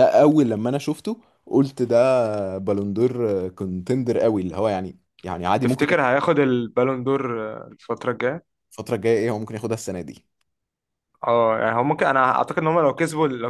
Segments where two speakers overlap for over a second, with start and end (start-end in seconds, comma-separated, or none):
none